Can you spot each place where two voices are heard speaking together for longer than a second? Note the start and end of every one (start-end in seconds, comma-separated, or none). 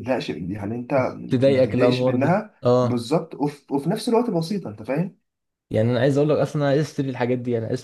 1.4-3.0